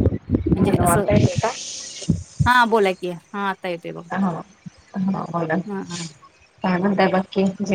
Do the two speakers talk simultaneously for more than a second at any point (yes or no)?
no